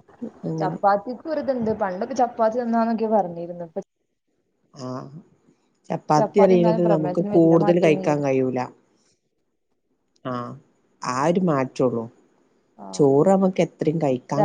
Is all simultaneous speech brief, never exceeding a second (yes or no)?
no